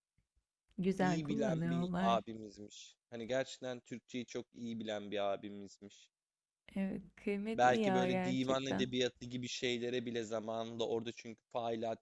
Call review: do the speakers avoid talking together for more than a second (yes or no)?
no